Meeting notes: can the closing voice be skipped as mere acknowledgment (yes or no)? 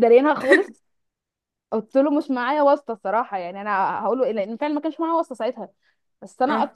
yes